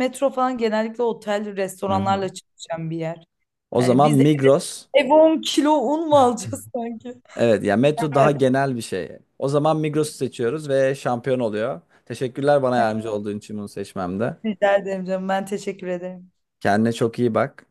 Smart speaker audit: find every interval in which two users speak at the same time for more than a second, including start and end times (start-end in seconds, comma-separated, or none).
none